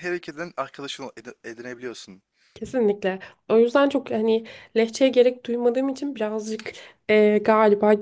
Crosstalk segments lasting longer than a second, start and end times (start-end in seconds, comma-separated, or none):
none